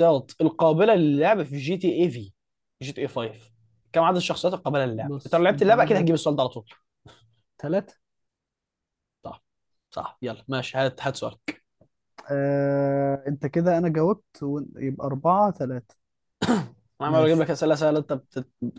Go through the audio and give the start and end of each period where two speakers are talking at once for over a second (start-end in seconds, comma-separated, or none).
4.9-6.2